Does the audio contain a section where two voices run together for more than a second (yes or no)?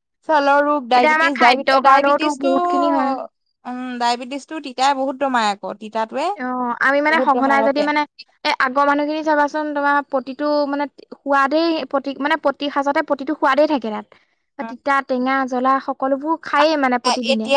yes